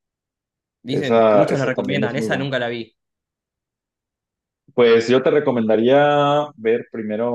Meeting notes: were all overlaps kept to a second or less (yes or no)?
no